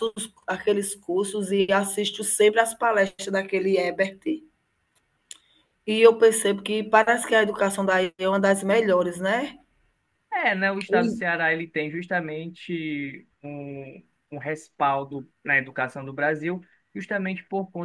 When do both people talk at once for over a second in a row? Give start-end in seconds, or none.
none